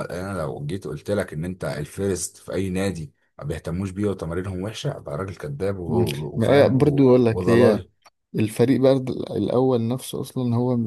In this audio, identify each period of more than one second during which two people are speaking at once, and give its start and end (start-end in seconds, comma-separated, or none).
5.9-7.8